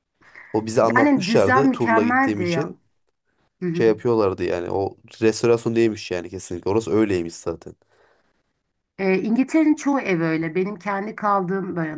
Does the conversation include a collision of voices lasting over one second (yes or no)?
yes